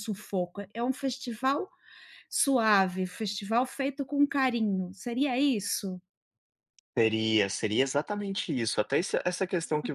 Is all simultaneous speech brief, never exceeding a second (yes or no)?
yes